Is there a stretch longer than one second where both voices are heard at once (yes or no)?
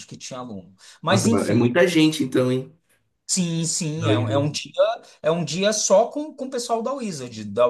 no